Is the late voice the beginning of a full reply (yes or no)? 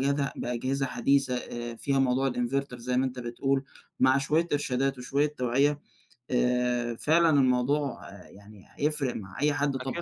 yes